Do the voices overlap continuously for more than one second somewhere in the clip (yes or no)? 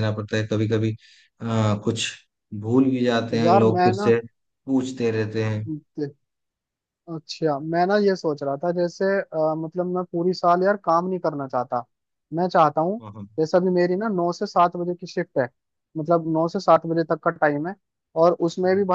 no